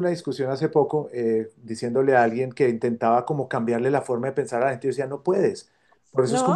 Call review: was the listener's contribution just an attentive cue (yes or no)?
yes